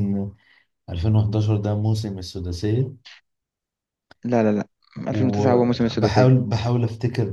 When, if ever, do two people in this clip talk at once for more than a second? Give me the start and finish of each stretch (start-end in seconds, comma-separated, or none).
5.1-6.4